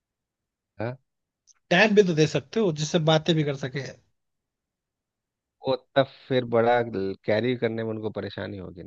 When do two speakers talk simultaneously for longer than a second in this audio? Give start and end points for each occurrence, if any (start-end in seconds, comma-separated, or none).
none